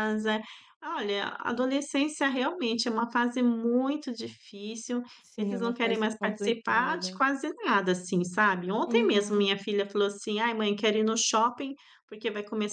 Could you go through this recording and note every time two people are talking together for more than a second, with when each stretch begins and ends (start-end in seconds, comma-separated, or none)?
5.2-7.2